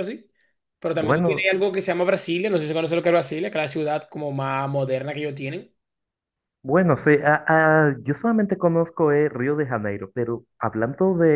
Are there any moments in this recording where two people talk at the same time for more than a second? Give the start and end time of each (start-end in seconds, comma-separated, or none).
none